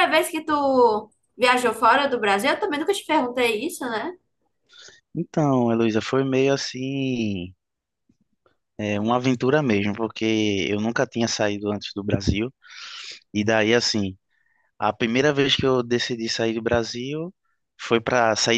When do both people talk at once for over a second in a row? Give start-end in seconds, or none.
none